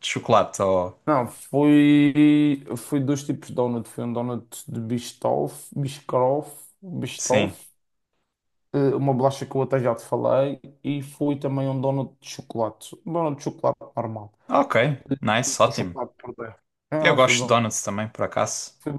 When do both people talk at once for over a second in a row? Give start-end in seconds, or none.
none